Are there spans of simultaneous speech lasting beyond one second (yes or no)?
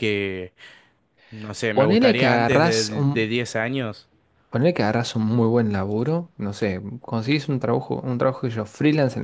yes